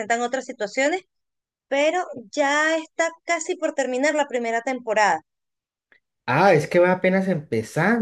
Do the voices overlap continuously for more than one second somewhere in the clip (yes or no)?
no